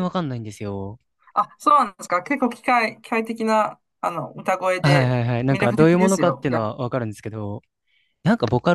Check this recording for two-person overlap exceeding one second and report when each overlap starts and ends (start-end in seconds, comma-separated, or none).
4.8-6.6